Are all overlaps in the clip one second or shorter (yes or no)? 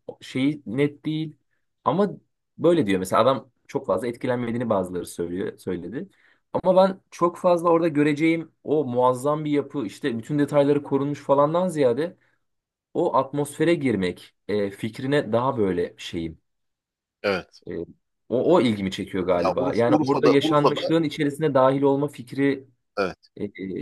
no